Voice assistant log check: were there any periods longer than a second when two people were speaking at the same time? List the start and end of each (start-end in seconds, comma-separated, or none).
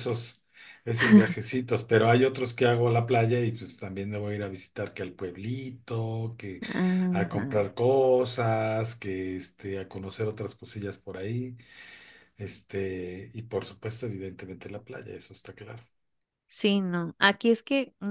none